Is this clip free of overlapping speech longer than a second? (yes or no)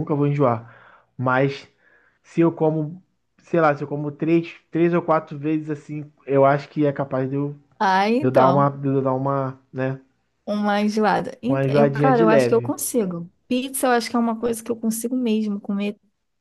no